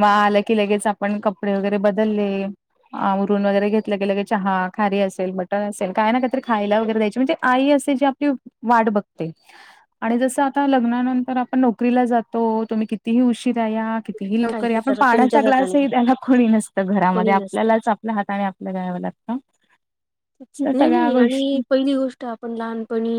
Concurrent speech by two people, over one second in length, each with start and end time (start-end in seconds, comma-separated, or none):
14.5-15.8